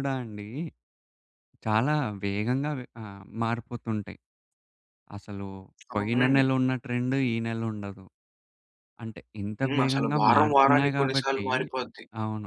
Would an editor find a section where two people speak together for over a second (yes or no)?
yes